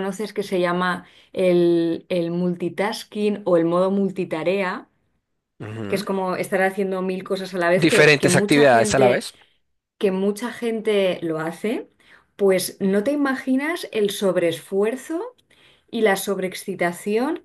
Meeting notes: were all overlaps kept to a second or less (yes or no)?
no